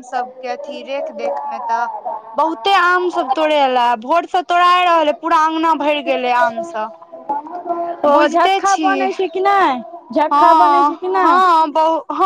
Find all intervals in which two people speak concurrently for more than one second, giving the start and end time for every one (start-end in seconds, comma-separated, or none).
none